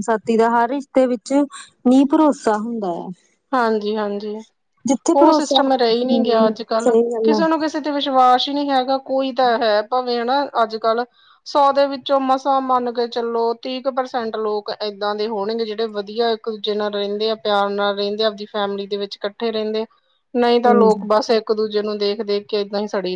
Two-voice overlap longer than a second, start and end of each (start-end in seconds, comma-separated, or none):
5.2-7.4